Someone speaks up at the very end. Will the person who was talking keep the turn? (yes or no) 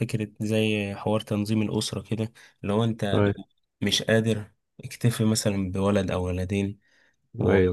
yes